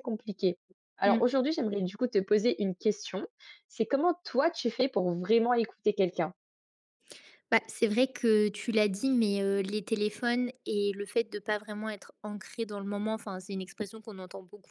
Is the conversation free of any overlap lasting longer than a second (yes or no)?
yes